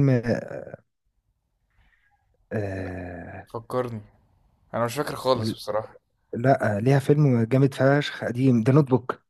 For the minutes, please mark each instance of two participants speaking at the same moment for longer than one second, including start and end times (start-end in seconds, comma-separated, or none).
none